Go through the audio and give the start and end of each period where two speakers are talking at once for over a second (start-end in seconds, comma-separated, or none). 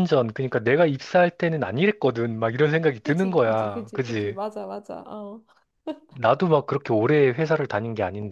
3.0-4.4